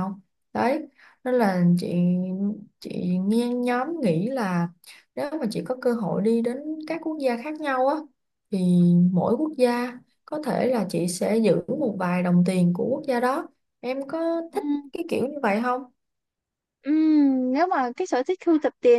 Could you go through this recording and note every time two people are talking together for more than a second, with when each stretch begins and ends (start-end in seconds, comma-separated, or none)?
none